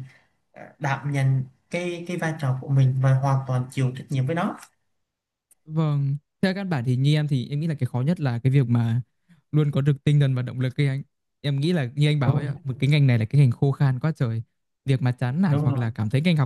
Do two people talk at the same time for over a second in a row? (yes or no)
no